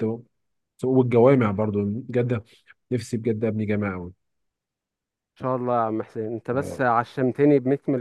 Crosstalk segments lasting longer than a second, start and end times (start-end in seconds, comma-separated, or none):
none